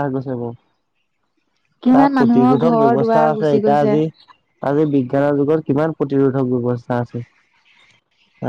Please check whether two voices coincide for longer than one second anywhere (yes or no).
yes